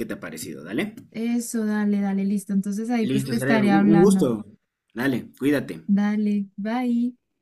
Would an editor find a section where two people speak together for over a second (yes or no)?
yes